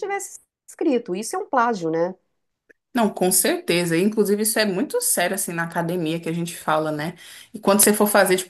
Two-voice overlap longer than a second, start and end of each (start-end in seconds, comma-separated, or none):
none